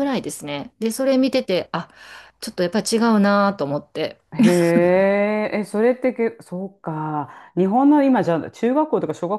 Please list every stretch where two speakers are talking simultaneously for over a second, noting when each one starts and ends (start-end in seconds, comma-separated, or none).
none